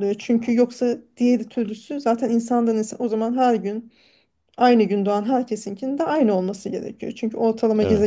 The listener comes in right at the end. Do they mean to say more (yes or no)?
no